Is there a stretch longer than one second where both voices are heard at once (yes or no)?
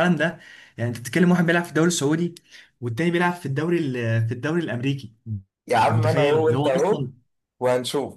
yes